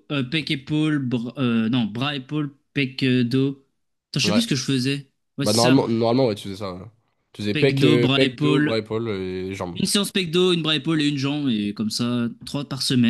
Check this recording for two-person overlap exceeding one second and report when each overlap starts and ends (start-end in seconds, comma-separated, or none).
7.5-8.8